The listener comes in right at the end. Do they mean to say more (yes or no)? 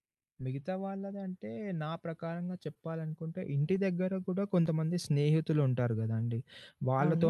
no